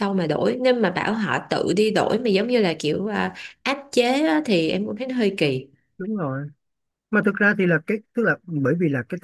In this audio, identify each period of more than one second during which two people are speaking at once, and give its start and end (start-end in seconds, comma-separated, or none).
none